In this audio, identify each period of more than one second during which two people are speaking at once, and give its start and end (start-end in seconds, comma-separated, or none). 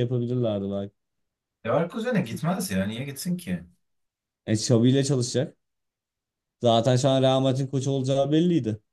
none